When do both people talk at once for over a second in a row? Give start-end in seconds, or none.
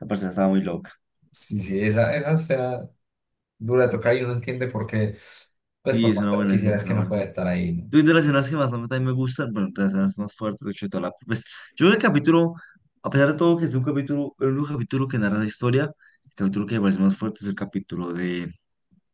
5.9-7.3